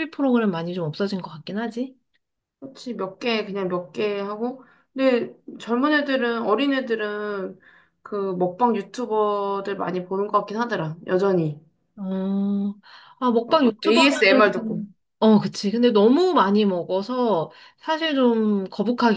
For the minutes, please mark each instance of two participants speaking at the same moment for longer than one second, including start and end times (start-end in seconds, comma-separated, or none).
13.5-14.9